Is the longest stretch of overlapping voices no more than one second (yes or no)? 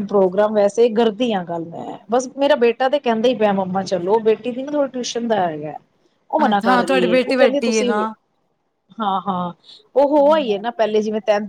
no